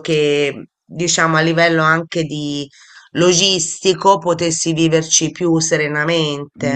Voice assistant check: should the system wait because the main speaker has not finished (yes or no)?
no